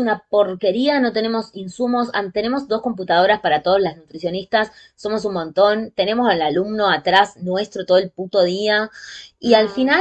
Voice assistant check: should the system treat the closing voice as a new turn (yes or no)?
no